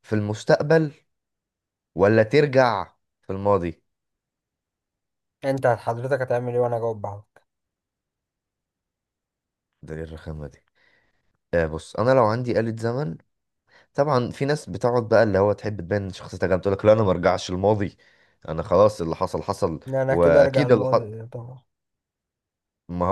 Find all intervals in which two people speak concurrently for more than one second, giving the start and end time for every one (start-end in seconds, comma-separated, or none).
19.9-21.1